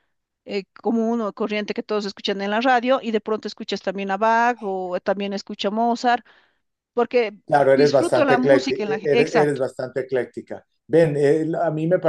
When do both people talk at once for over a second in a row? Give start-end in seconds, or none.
7.7-9.6